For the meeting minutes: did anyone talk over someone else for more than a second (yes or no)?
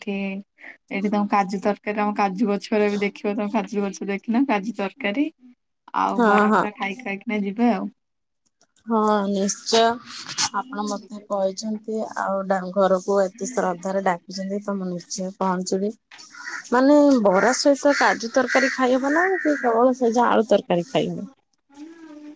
no